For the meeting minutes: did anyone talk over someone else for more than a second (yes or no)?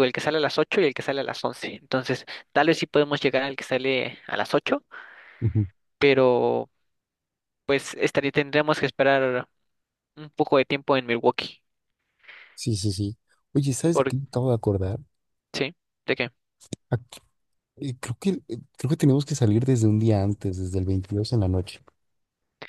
no